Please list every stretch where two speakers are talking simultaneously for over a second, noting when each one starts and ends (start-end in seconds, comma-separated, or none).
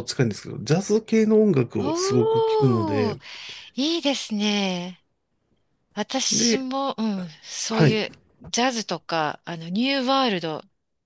1.8-3.2